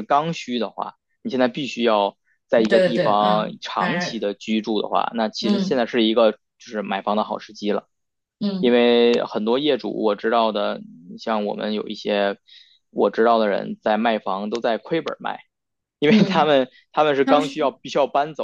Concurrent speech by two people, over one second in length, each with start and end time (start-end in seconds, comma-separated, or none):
2.6-4.2